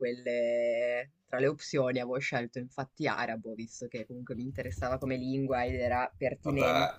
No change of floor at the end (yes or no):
yes